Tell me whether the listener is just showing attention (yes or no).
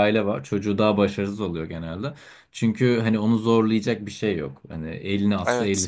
yes